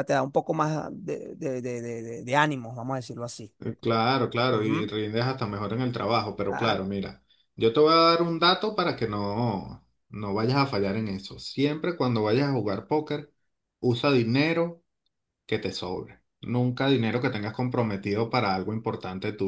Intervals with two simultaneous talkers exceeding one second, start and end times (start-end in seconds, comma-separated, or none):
none